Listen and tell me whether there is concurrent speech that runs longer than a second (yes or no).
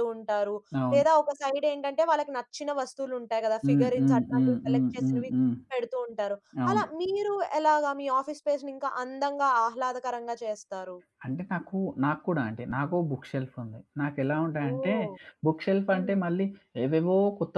yes